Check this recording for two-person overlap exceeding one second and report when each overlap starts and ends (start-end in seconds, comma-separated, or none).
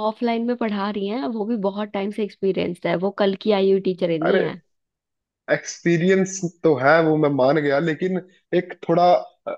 none